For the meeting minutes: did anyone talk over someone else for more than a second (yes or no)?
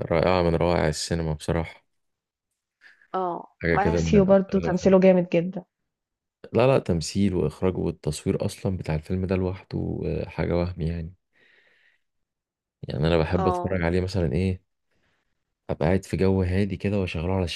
yes